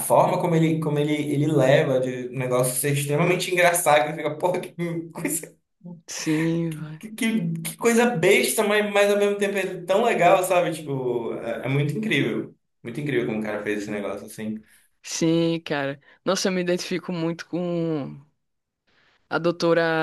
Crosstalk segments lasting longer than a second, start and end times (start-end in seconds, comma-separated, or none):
none